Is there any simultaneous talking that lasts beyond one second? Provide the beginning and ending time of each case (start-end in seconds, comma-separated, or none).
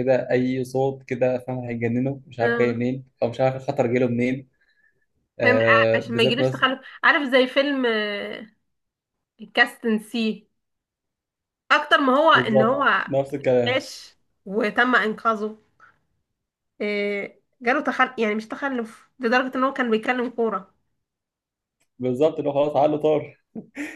5.4-6.7